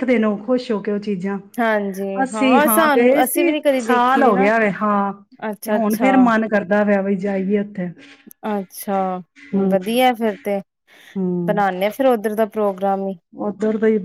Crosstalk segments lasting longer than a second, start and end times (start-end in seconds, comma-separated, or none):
2.7-4.5